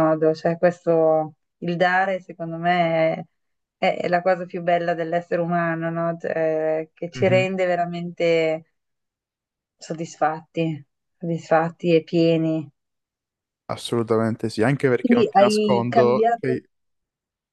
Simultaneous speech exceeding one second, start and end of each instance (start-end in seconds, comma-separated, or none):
15.0-16.5